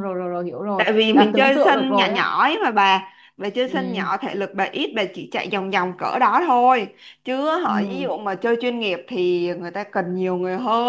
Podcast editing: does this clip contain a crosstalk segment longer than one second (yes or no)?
yes